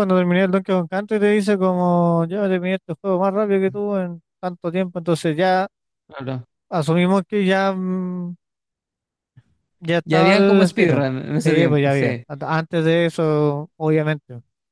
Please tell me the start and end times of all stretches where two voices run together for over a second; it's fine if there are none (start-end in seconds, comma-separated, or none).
10.1-12.2